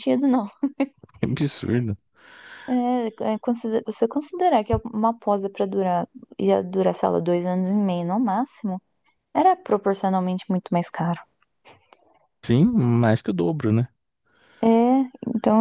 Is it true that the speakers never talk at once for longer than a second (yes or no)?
yes